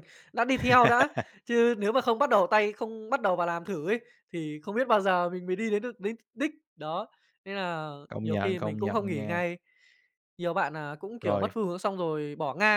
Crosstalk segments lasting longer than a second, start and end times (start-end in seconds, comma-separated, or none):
8.1-9.4